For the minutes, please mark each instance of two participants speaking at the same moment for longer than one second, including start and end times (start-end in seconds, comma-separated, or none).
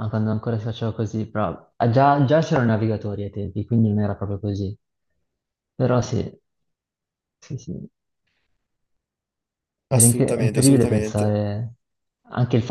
9.9-11.4